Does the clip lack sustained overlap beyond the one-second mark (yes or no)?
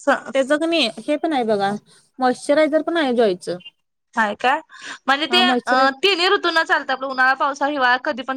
yes